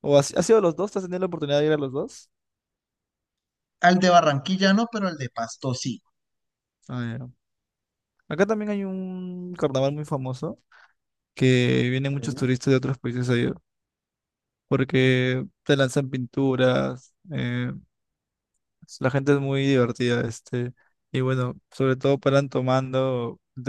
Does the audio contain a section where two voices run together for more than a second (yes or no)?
no